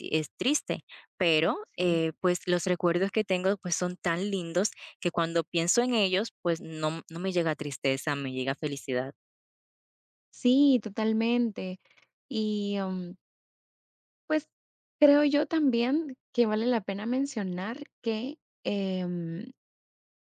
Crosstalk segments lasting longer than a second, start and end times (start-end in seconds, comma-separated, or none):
none